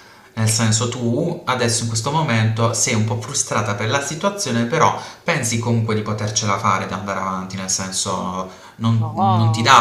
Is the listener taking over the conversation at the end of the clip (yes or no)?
no